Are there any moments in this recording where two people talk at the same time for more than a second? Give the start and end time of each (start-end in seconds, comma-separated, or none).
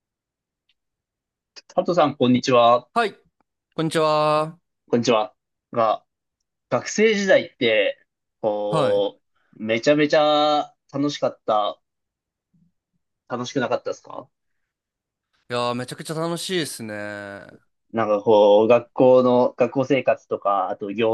none